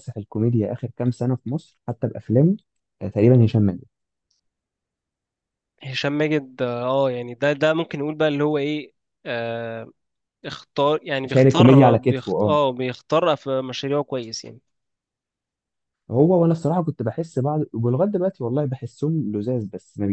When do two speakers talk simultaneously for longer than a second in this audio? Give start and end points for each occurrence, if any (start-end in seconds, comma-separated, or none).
11.2-12.6